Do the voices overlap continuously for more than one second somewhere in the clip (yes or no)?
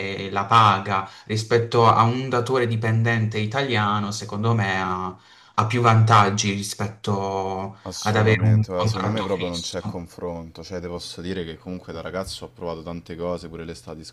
yes